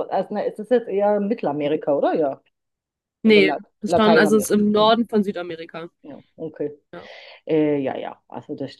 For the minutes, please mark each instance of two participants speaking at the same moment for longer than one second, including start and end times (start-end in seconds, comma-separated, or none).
3.2-4.9